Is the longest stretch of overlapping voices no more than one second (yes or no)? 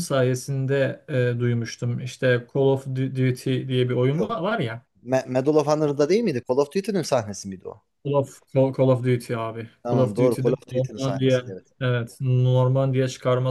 no